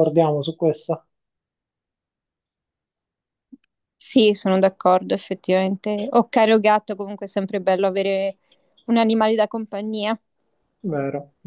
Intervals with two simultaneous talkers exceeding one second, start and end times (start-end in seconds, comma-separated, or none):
none